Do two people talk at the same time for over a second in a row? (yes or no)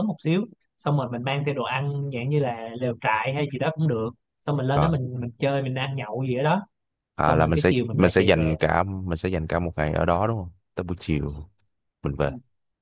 yes